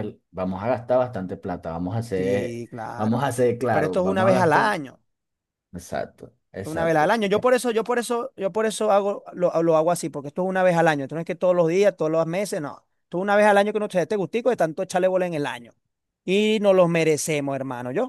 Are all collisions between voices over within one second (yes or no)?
no